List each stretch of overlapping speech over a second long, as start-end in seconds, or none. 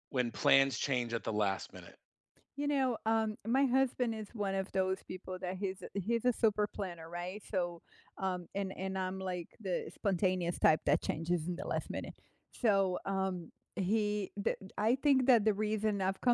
none